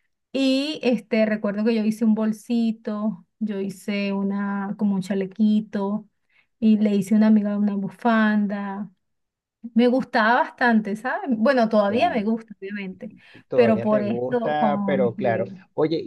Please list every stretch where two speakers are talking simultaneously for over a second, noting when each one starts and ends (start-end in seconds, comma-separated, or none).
13.5-15.5